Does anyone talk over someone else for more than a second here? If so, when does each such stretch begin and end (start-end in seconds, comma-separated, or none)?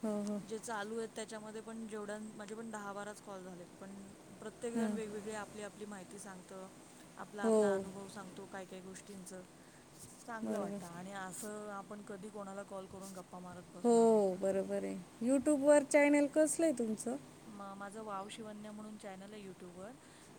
none